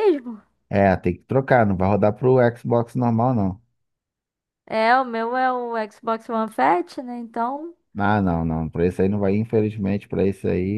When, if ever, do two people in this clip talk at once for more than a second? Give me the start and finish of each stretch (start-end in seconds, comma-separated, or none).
none